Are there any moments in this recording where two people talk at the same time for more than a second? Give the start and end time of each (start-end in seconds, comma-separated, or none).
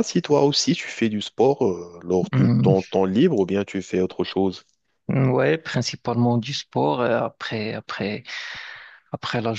none